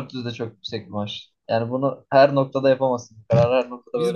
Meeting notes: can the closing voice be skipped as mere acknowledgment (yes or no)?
no